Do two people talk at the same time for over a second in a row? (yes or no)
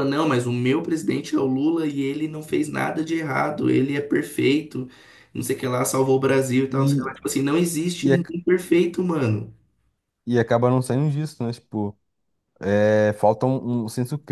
no